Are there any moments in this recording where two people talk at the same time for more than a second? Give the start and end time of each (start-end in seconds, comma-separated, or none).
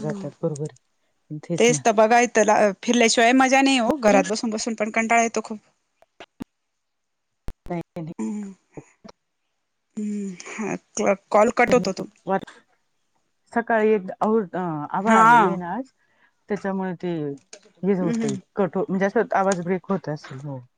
none